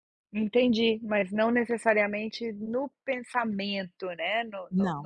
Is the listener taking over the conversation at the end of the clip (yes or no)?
yes